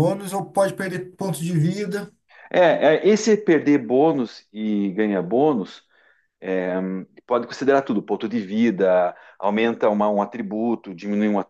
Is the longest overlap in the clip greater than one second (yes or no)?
no